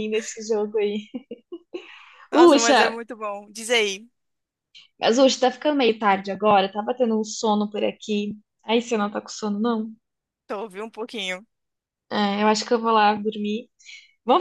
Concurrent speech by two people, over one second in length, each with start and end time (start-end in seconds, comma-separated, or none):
none